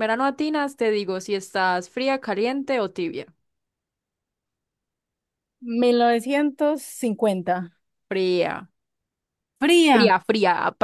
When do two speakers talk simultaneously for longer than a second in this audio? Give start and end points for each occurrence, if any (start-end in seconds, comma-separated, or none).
none